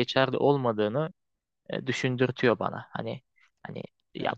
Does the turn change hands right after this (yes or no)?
no